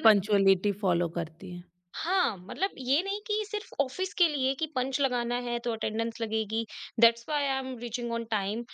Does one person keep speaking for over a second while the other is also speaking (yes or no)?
no